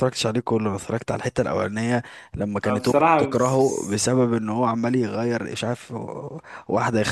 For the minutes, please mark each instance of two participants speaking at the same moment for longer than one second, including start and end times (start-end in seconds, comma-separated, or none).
2.6-4.2